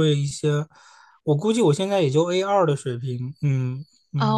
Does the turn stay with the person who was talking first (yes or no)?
no